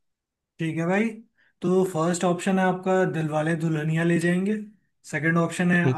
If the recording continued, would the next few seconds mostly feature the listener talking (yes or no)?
no